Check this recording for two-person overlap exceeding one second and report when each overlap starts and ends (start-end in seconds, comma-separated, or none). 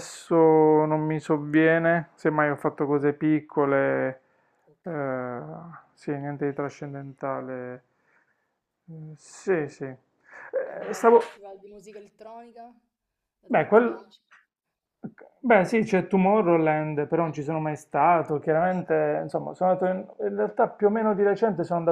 none